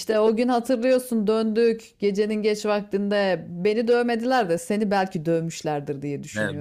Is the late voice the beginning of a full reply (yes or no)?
yes